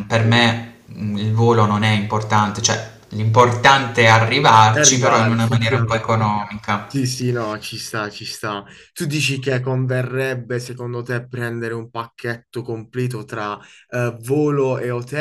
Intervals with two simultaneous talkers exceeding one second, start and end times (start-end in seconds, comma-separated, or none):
4.7-6.1